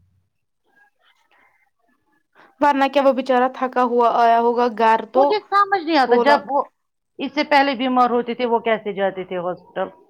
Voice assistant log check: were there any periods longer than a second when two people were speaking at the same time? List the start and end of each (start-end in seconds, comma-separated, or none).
none